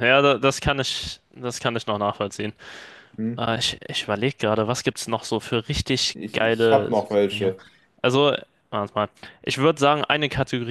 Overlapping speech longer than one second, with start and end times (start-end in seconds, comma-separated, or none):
6.1-7.5